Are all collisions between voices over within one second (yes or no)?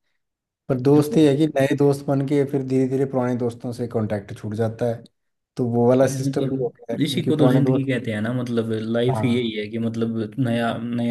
no